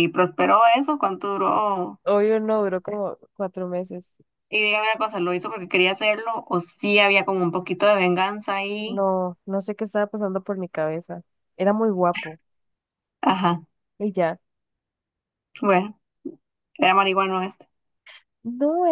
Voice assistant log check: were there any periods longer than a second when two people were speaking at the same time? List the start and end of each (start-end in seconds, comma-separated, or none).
none